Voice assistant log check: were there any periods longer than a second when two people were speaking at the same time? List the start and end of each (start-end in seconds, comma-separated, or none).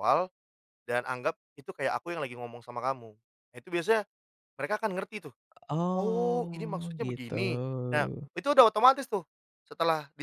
5.9-7.3